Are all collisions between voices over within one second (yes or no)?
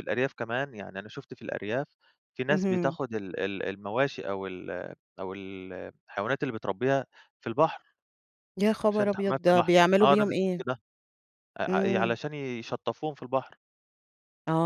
no